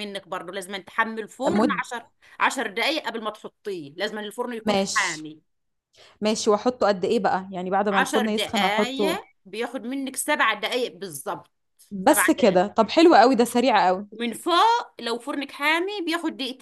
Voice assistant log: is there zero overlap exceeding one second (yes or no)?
no